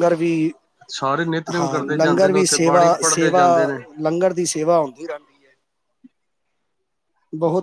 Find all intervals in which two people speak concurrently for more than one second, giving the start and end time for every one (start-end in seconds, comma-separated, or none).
1.6-3.4